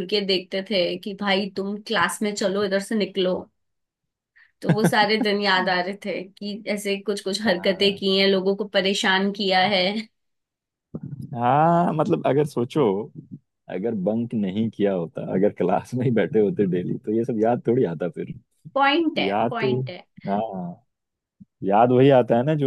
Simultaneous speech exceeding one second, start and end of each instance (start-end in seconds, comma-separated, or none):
none